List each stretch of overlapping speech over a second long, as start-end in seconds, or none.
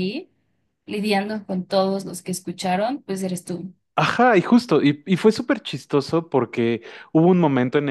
none